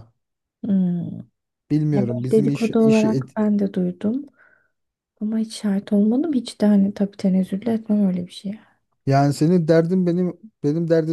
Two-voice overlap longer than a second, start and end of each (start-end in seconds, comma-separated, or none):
1.9-3.4